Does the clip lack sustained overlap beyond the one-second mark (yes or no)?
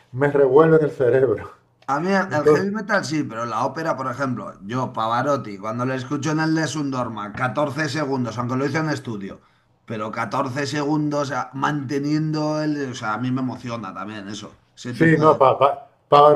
yes